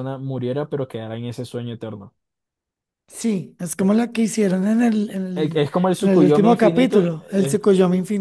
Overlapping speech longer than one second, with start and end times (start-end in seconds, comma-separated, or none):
5.3-7.6